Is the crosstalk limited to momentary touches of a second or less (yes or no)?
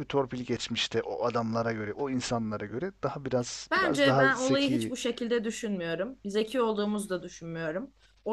no